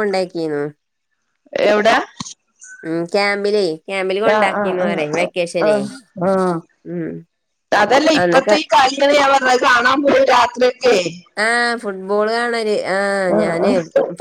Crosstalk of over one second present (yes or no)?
yes